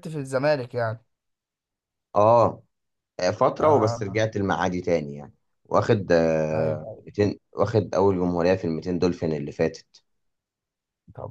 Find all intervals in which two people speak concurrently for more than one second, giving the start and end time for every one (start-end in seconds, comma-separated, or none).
none